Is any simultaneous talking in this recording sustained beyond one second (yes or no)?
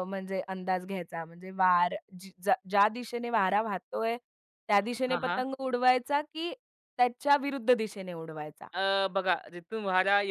no